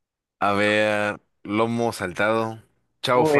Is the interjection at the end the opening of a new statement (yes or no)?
yes